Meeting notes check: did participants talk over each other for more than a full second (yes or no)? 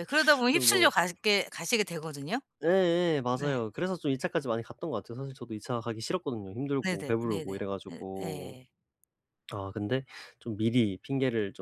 yes